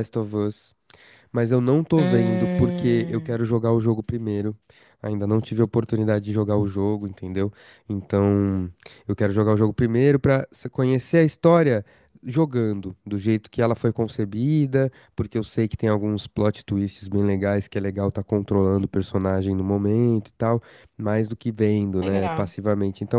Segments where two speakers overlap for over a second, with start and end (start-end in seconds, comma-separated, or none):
1.9-3.4